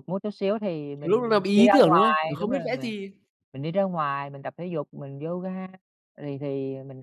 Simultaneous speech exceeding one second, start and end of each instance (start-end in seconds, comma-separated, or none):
1.0-2.9